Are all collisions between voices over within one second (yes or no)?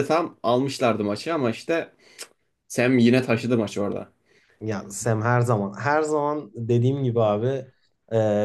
yes